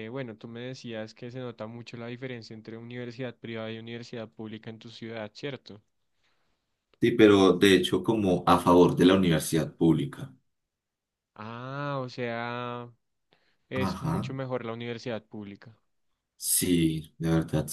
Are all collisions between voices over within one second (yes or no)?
yes